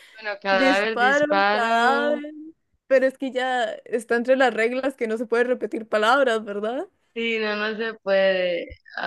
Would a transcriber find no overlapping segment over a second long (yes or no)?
no